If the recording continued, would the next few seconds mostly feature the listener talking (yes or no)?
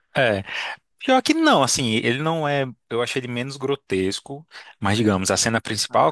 no